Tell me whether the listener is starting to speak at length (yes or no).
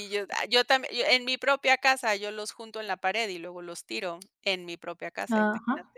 yes